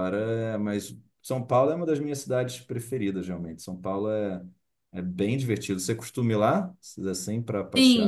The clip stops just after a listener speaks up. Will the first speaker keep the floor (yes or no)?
no